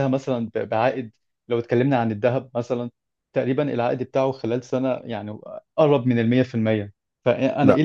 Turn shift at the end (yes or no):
no